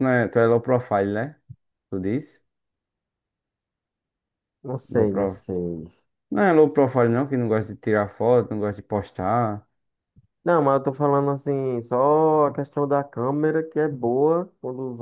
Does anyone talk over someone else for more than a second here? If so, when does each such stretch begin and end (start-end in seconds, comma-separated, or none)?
none